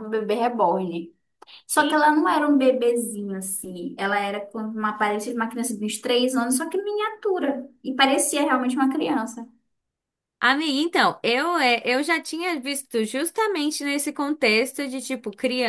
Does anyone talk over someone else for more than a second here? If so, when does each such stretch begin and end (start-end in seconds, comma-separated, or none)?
none